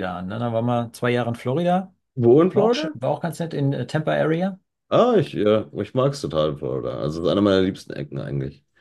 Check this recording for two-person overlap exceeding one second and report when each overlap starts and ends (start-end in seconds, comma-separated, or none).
none